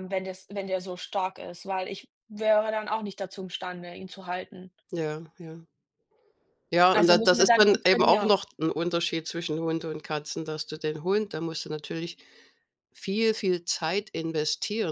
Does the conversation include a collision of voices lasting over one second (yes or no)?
yes